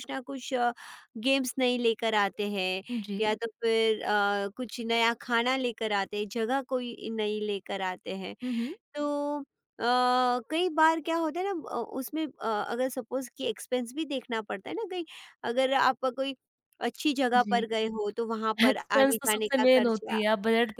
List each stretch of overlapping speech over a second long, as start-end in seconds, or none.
18.7-20.2